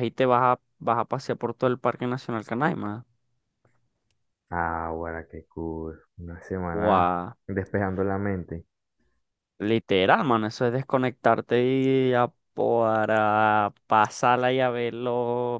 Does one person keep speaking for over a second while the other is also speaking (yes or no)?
no